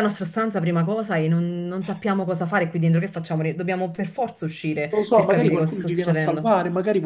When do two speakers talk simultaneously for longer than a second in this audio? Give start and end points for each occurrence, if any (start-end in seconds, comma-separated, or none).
4.9-6.5